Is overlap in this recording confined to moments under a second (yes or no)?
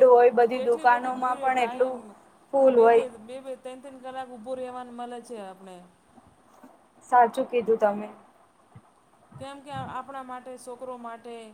no